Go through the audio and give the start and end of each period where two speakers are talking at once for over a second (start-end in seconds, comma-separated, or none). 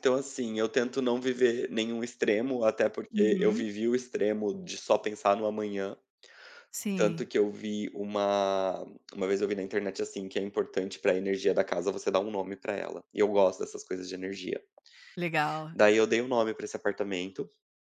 none